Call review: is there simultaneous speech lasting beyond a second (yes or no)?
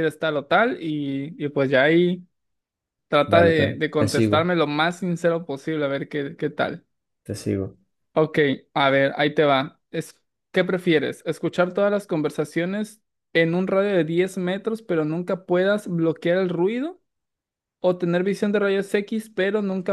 yes